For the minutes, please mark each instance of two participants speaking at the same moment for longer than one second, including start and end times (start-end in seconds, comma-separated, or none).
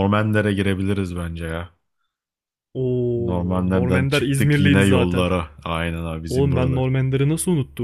3.1-5.3